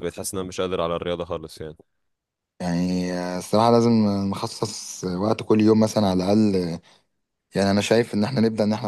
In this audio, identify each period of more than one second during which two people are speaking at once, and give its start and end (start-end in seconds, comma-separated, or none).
none